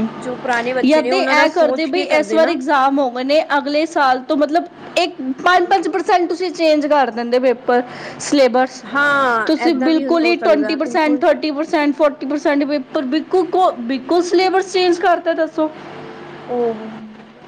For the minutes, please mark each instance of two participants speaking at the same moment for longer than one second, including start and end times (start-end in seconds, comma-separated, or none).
0.9-2.6, 9.5-11.2